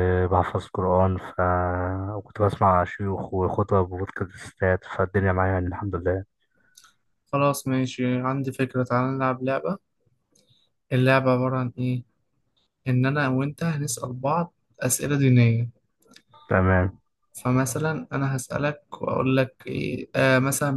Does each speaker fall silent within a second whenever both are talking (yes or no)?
yes